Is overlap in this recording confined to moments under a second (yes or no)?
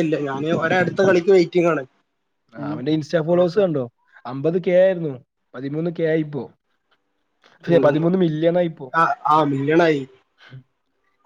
yes